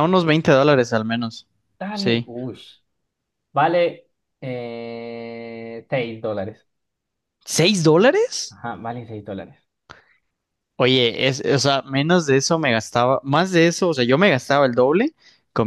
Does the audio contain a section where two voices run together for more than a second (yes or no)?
no